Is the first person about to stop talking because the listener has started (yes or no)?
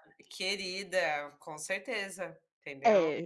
yes